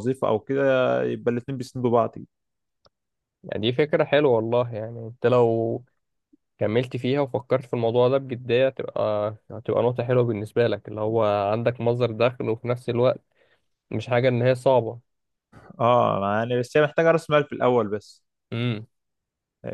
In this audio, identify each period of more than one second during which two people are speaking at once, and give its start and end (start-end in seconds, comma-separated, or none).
none